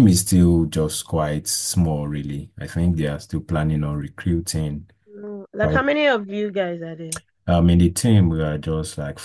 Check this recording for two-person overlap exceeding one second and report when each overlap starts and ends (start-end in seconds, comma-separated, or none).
none